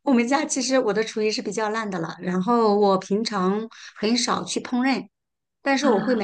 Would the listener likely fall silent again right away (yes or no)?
yes